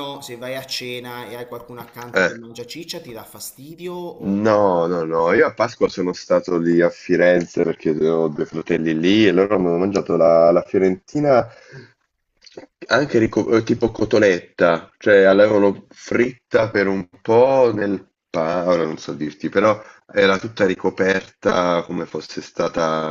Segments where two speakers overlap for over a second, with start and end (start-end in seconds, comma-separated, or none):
none